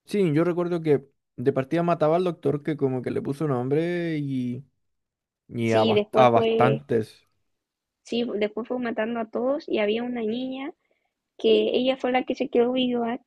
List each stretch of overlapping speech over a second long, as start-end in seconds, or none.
5.6-6.8